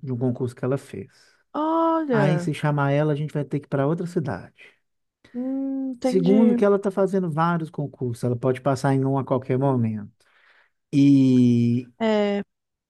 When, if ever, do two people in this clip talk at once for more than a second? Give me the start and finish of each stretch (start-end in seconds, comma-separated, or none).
none